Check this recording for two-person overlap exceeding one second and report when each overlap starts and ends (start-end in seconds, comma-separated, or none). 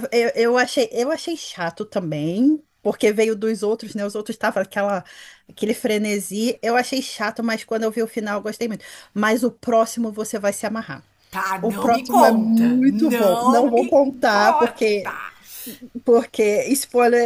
11.6-14.9